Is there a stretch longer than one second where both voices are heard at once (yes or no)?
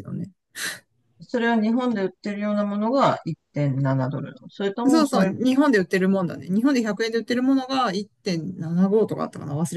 no